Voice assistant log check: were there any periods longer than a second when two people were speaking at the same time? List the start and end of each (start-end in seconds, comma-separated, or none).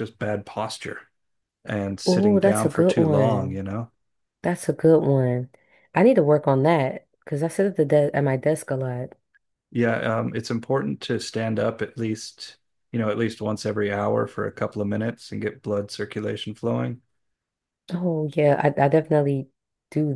2.0-3.6